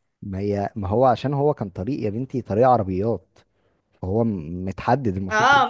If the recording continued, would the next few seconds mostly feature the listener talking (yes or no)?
yes